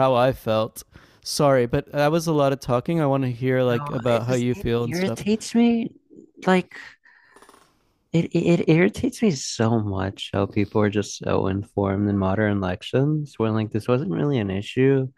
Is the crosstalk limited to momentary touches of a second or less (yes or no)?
no